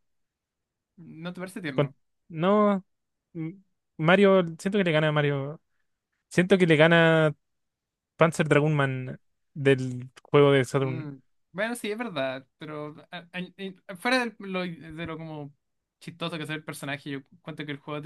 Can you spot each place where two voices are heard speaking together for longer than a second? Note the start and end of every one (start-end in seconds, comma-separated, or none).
none